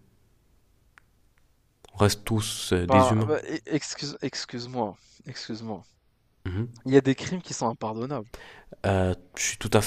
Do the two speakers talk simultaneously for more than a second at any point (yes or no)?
no